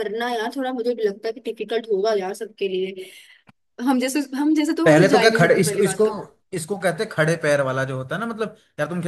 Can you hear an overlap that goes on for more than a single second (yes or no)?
yes